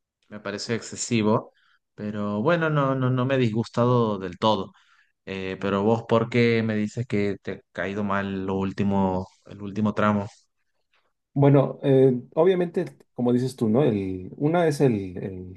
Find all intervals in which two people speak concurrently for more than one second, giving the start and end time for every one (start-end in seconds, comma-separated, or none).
none